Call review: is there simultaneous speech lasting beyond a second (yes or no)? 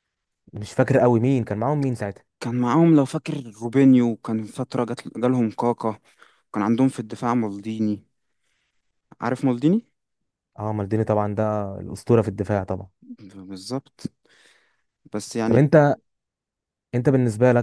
no